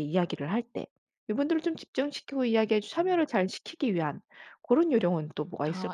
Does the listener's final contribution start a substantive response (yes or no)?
yes